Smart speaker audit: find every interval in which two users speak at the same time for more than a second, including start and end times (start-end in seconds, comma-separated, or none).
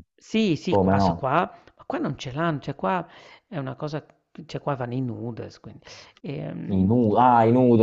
none